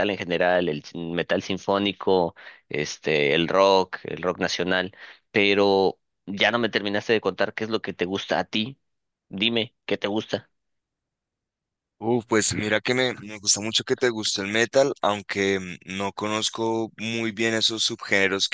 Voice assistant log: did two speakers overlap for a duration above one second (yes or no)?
no